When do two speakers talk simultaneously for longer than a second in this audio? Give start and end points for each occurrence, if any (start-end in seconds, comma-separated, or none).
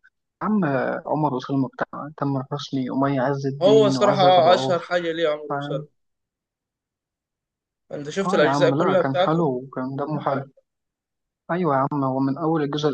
3.6-4.9, 8.2-9.5